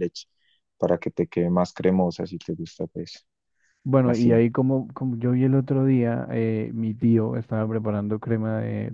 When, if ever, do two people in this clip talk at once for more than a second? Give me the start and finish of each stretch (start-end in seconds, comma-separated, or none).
none